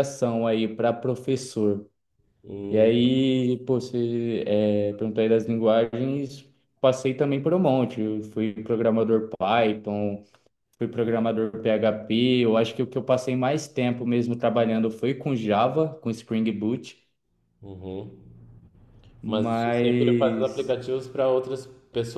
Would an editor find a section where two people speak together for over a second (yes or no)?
yes